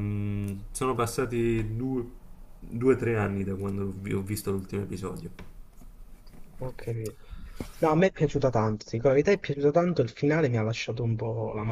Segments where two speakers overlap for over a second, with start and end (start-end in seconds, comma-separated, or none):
none